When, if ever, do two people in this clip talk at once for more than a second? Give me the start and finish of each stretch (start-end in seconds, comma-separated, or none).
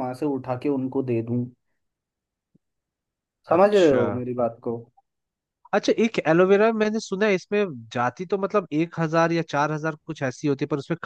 none